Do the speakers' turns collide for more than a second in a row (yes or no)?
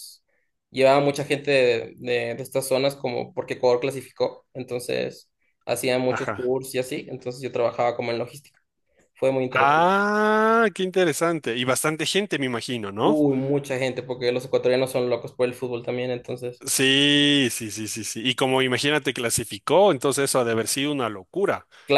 no